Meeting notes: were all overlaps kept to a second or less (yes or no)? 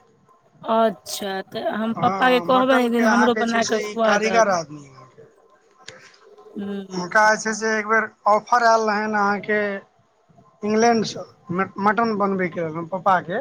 no